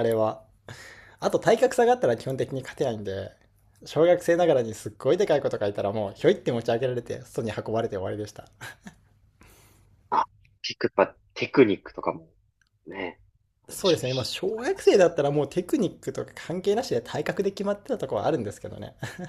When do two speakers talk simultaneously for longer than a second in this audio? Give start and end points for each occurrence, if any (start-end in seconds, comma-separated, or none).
13.7-15.1